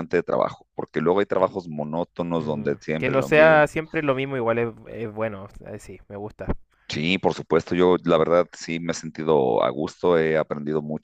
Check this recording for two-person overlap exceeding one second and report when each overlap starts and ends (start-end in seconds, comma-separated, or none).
2.4-3.6